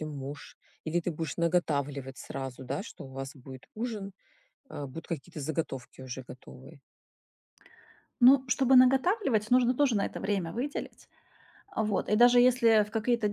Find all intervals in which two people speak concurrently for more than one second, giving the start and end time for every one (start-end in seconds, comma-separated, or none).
none